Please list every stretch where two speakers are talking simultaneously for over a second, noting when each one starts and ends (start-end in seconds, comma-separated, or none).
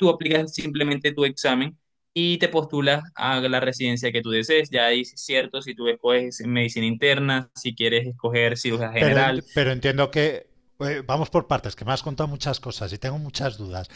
none